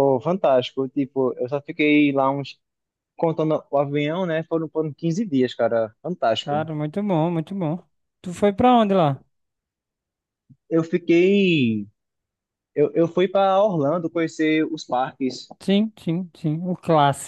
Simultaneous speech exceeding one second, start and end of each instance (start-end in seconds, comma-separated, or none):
none